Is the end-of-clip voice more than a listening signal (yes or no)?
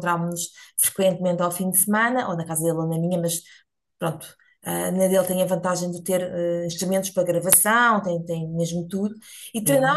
no